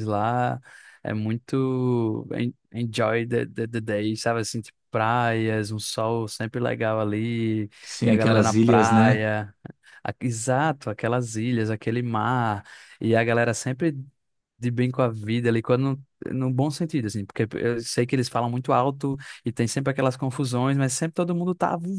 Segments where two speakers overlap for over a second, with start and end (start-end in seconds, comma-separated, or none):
8.1-9.3